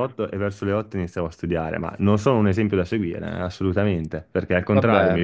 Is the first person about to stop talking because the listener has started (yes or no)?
no